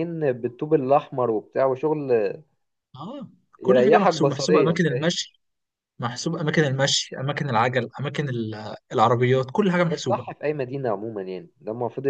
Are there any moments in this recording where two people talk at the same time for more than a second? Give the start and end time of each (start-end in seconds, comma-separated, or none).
3.6-5.1